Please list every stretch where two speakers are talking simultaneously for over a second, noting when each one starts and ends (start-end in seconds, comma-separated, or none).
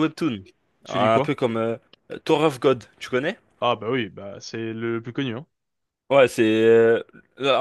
none